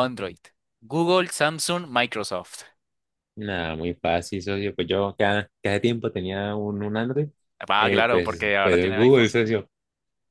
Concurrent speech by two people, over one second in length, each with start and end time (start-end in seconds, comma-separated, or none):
7.8-9.3